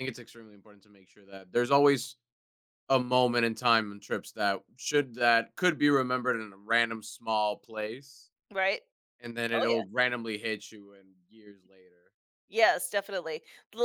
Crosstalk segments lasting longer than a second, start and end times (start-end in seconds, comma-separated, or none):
none